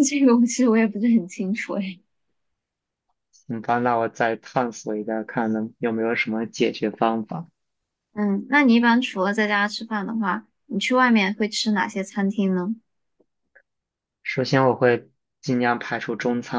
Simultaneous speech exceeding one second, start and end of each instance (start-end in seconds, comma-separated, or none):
none